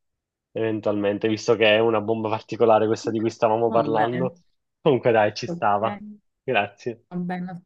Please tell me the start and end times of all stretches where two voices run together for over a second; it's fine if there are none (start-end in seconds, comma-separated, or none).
none